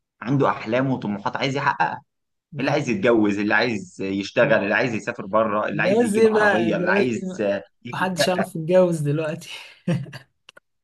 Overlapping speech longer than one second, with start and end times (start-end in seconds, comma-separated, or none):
5.7-7.1